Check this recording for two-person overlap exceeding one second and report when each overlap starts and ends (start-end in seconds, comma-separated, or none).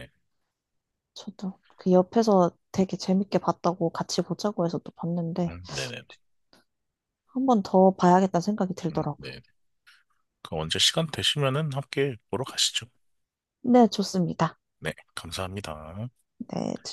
none